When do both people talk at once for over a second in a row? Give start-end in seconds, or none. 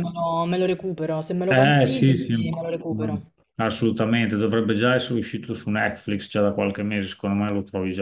1.5-3.3